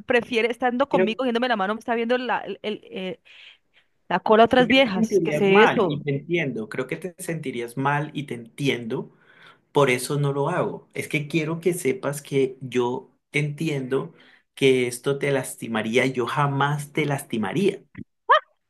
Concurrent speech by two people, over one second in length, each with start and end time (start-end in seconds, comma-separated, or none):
4.5-6.0